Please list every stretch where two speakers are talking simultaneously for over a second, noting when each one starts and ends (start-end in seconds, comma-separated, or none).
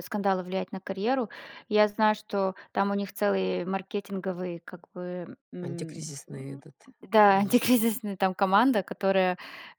none